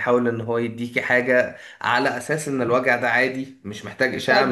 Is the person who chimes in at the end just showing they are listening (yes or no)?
no